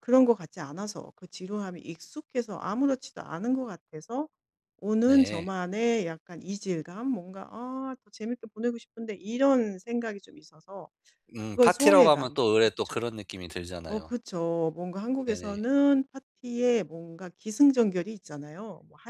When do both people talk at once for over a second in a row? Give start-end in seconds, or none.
11.5-13.0